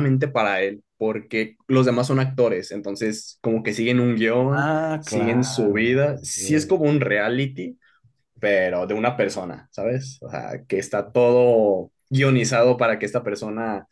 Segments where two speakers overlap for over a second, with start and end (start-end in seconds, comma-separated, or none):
4.5-6.7